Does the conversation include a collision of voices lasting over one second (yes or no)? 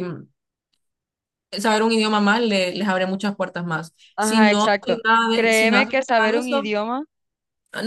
yes